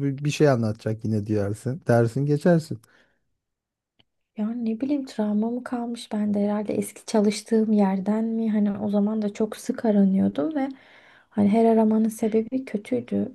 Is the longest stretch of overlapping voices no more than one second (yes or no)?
yes